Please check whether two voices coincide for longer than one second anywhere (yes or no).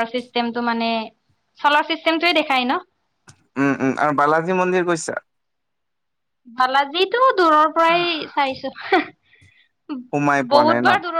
no